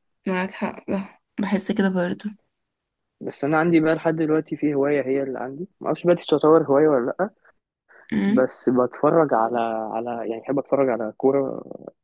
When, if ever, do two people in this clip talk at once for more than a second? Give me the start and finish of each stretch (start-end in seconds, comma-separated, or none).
none